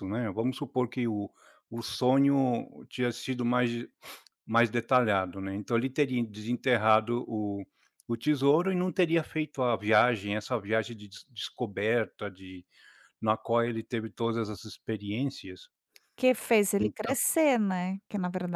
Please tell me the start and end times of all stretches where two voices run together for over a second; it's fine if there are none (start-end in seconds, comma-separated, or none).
none